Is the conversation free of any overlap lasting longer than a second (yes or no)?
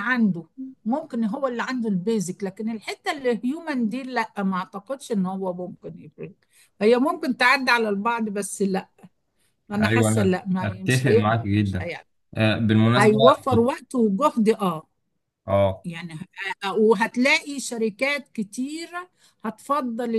no